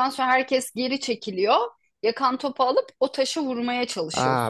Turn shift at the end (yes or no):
yes